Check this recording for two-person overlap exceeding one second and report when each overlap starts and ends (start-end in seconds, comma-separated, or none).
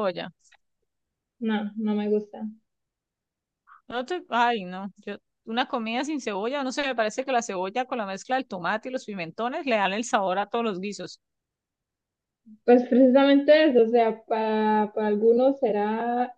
none